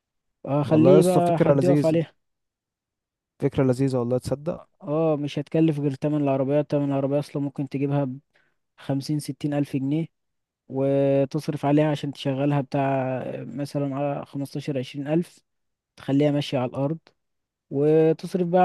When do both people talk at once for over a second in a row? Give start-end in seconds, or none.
0.7-2.0